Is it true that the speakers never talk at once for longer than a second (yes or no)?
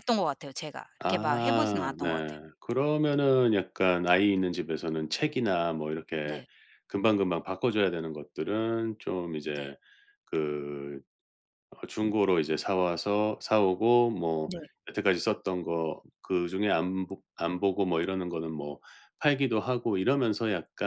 no